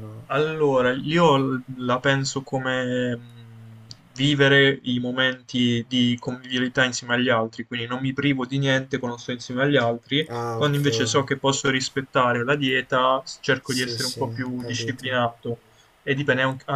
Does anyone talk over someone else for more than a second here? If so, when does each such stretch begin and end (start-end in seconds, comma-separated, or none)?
13.6-15.3